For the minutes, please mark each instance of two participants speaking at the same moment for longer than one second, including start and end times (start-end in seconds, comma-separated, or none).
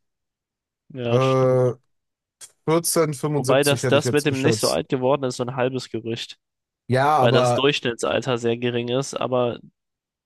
3.4-4.8